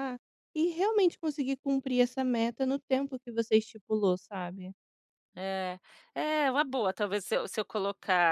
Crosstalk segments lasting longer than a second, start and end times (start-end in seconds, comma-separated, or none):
none